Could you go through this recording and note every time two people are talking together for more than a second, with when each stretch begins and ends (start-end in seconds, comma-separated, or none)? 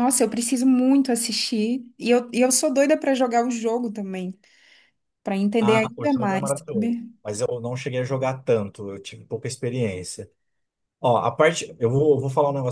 5.6-7.1